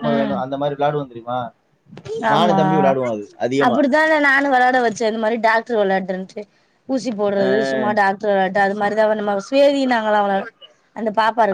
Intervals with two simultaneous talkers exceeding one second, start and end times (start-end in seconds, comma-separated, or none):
none